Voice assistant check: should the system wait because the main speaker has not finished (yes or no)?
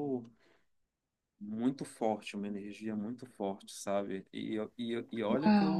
yes